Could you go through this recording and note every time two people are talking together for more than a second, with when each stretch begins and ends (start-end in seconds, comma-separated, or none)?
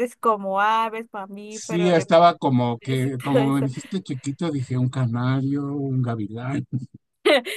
1.5-3.7